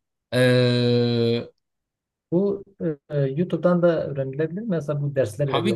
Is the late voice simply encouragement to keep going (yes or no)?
no